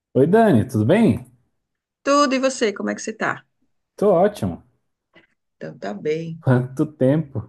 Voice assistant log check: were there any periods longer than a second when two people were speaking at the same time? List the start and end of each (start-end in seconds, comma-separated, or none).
none